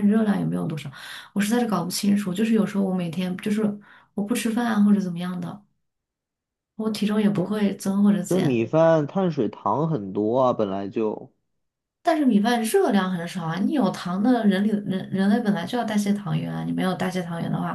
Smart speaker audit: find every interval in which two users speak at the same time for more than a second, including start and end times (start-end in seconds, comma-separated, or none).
none